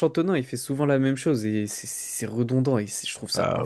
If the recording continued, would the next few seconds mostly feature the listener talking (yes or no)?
yes